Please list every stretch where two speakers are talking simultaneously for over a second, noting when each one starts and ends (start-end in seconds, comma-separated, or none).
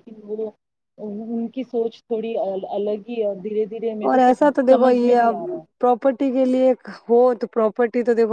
none